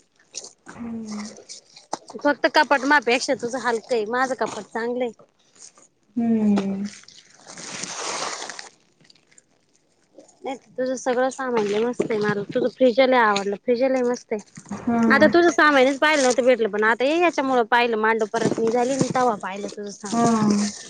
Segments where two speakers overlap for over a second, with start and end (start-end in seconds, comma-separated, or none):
none